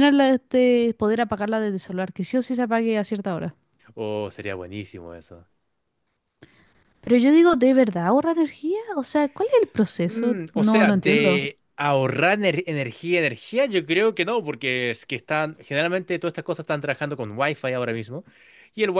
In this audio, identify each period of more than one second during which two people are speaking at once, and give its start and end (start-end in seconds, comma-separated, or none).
10.1-11.4